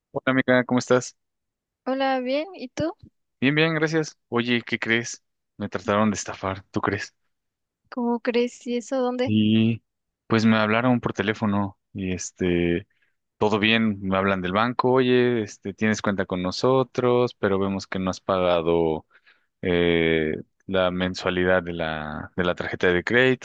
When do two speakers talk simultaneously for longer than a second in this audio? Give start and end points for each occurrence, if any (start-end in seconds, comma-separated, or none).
none